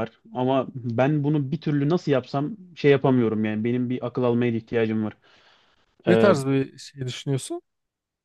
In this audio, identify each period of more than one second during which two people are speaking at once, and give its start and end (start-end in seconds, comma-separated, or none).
none